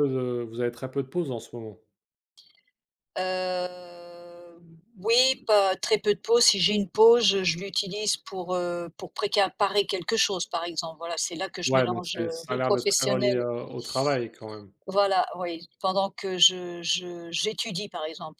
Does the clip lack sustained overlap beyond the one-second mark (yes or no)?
no